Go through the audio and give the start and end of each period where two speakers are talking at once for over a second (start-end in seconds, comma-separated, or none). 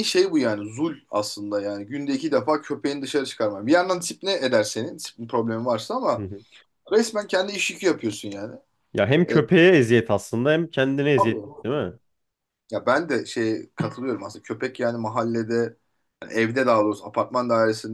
none